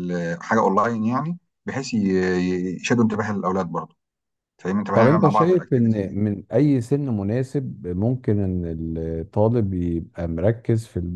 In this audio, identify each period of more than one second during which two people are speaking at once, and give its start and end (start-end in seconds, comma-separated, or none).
4.9-6.2